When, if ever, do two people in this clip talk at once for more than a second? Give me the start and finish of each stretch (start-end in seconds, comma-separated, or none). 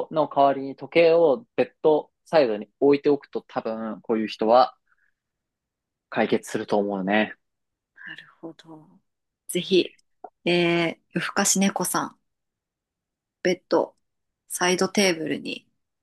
none